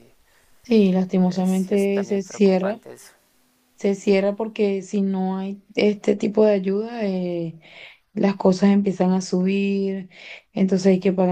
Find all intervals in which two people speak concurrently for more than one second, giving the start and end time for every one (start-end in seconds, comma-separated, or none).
1.3-2.8